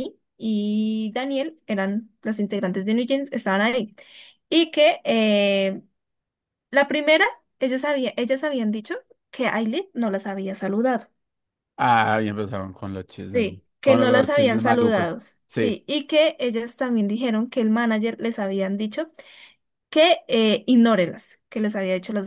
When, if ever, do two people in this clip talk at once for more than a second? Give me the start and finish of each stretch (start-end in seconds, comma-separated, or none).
13.3-15.8